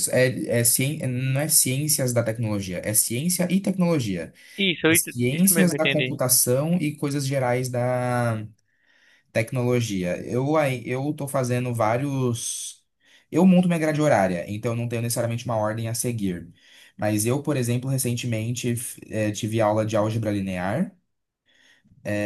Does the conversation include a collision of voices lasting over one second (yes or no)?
yes